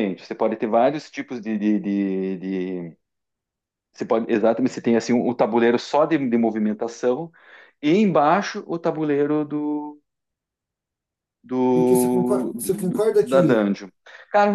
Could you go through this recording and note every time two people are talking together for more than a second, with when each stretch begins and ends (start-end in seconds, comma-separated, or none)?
11.7-13.6